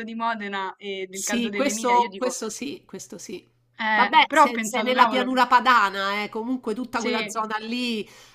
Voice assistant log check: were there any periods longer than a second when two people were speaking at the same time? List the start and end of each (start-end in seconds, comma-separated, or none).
1.1-2.4, 3.9-5.3